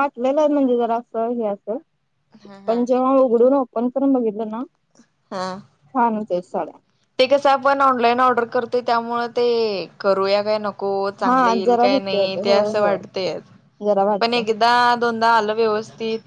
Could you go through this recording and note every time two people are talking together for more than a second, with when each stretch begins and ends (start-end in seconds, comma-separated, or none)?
11.3-13.0